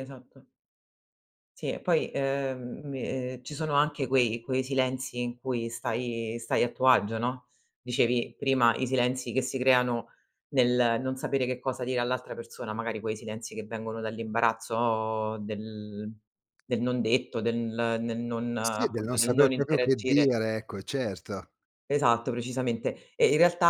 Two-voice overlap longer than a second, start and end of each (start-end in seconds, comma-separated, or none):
18.6-20.3